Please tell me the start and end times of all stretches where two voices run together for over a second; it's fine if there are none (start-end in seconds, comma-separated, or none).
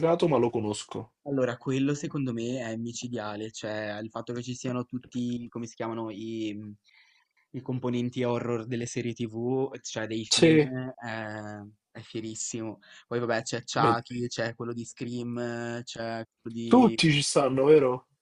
none